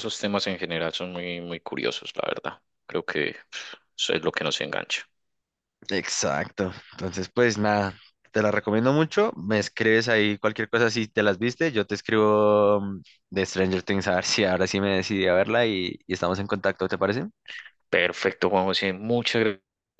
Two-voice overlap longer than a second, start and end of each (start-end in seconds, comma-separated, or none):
none